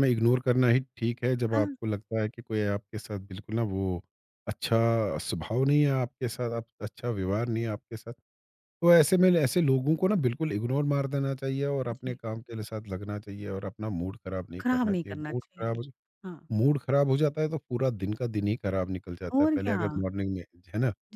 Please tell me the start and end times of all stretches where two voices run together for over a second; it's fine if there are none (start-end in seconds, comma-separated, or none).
14.6-15.8